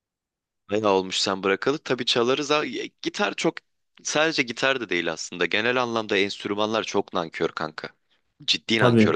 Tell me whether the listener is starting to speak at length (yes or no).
yes